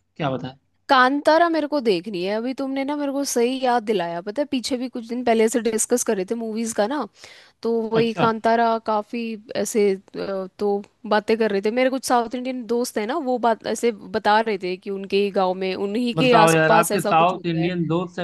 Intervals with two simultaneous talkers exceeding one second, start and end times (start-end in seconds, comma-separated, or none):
16.1-17.7